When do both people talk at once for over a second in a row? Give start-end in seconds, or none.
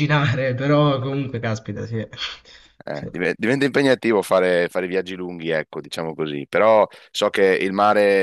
none